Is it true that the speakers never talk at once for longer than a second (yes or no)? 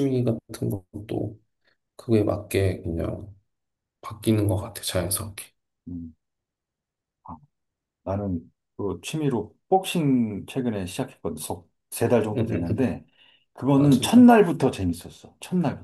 yes